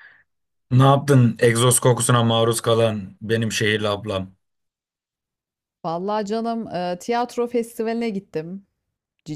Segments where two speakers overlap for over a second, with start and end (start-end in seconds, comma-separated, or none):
none